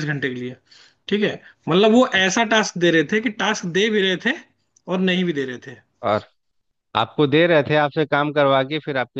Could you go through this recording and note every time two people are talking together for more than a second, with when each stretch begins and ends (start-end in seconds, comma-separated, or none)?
none